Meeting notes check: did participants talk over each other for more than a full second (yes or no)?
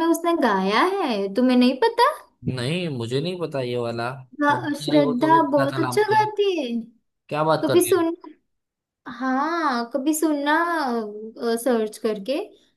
yes